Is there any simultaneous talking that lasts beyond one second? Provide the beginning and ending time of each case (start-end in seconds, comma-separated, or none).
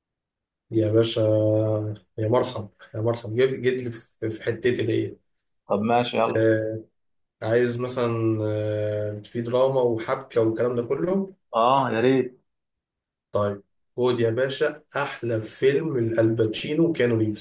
none